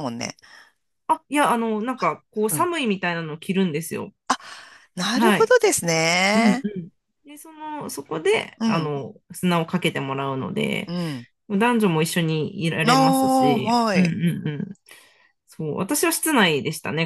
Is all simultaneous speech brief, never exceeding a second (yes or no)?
no